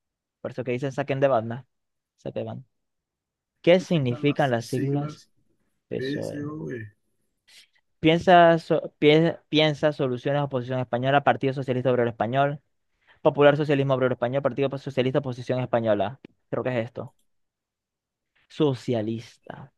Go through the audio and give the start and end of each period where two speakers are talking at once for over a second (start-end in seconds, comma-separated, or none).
3.7-5.2